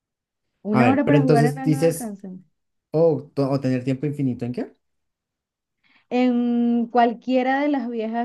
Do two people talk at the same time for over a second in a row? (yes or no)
yes